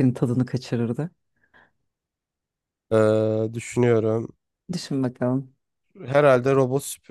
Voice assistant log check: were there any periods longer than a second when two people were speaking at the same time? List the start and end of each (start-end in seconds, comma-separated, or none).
none